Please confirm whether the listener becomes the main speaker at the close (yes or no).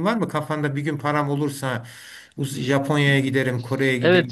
yes